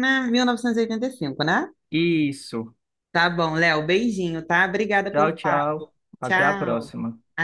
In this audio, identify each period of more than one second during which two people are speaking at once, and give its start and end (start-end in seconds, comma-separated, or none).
5.1-6.9